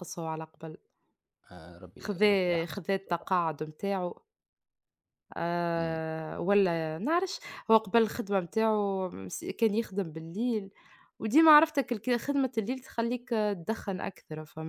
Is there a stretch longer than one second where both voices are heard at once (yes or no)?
yes